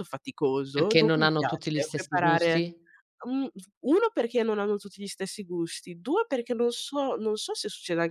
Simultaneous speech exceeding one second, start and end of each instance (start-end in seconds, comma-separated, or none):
0.7-2.6